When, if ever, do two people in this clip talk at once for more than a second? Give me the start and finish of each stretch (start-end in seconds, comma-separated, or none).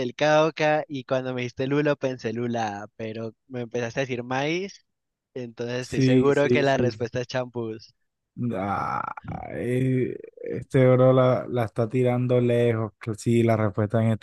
5.8-7.0